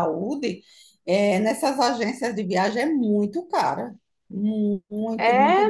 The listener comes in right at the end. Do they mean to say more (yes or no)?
yes